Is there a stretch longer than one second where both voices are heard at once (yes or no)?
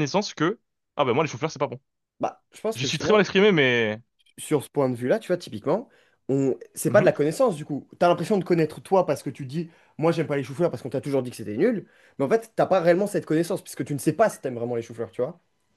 no